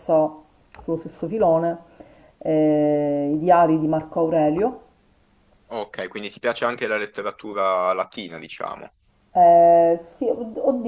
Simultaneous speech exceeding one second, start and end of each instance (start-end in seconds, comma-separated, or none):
none